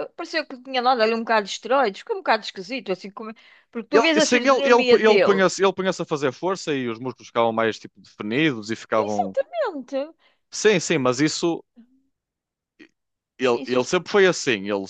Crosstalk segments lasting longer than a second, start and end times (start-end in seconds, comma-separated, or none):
3.9-5.4